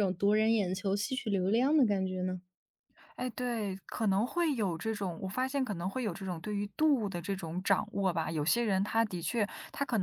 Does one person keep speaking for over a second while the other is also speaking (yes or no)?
no